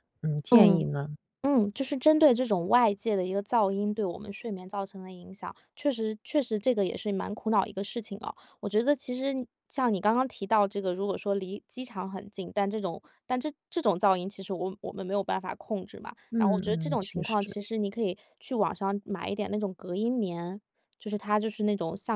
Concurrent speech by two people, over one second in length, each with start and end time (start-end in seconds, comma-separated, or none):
16.3-17.6